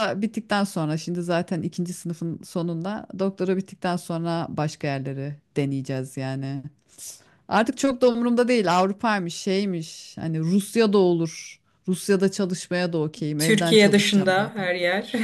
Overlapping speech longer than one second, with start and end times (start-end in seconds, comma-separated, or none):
13.4-14.7